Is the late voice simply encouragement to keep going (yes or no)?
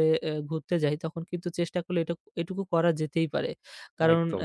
yes